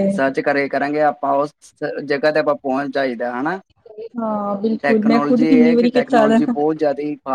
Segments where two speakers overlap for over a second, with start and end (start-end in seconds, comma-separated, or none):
4.8-6.4